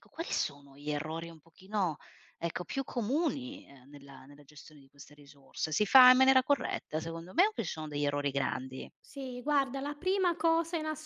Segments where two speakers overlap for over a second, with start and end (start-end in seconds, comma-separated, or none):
none